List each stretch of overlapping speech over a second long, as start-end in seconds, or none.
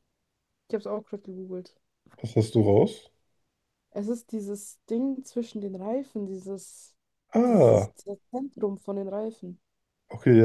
none